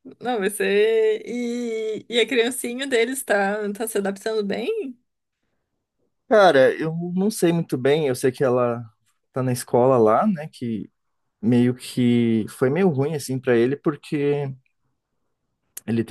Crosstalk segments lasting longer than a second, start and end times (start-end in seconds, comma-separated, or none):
none